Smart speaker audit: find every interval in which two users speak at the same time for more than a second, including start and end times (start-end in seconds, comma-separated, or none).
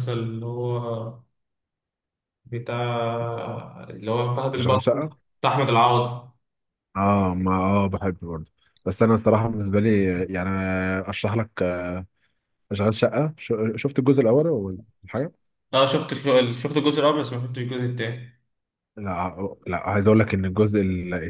none